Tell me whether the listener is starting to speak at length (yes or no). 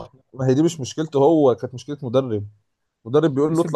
no